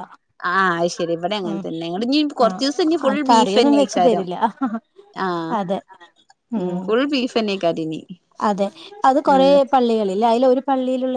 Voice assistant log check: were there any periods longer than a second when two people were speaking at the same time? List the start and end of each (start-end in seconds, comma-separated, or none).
2.5-4.2